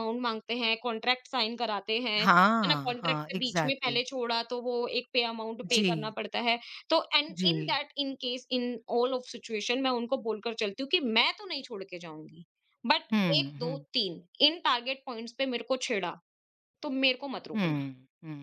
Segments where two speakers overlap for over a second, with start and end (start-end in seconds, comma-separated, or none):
2.2-4.0